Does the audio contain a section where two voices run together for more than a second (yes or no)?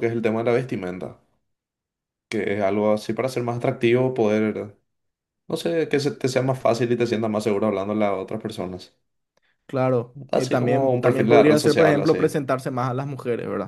yes